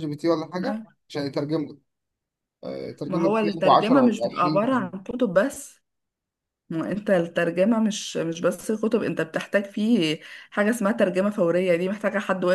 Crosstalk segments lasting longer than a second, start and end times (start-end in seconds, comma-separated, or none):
3.1-4.9